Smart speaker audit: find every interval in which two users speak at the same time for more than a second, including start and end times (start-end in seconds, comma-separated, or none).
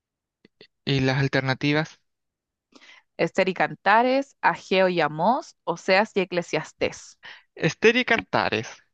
none